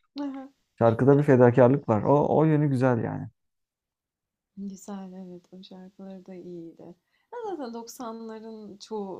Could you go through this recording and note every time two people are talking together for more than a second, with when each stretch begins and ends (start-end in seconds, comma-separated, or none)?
none